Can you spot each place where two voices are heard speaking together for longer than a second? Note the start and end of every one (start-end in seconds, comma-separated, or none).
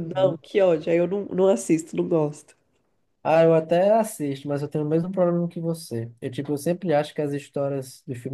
none